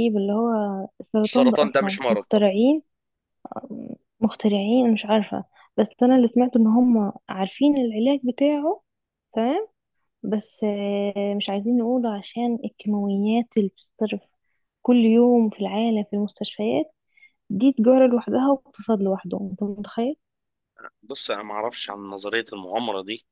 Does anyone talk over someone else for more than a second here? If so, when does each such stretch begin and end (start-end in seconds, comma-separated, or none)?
1.2-2.6